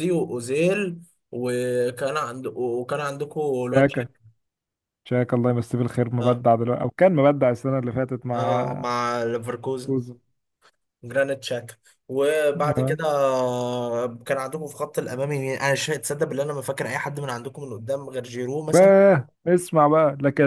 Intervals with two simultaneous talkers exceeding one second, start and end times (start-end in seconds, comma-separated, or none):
none